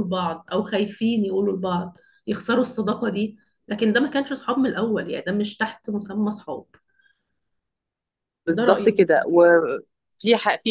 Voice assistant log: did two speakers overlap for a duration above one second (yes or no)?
no